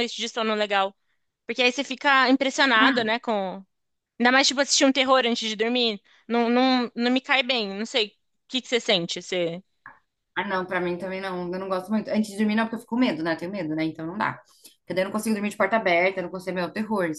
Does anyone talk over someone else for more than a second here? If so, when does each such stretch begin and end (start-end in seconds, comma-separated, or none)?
none